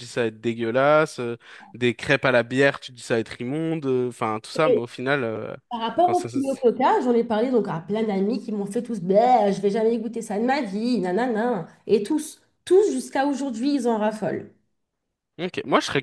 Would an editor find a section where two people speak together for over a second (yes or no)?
no